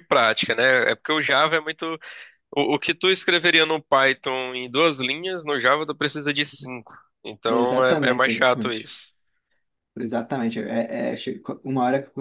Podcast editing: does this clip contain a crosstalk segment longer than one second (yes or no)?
yes